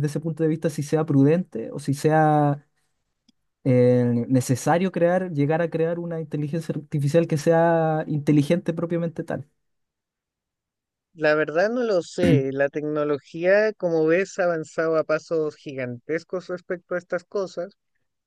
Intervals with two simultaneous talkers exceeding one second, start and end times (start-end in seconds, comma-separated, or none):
none